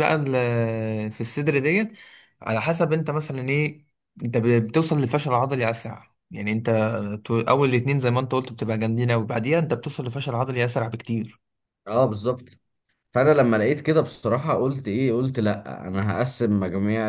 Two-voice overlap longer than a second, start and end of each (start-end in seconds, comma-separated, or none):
none